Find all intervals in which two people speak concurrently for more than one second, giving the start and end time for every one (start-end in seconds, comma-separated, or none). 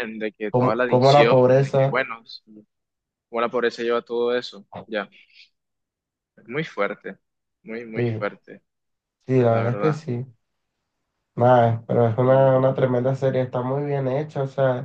0.5-2.0